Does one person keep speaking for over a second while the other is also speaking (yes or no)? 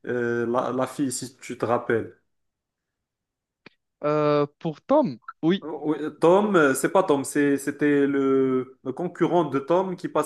no